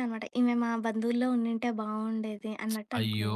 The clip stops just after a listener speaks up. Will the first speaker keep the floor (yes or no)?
no